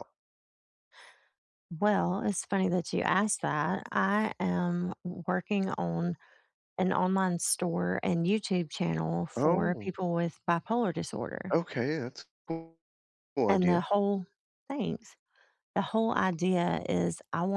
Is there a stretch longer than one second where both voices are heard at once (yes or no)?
no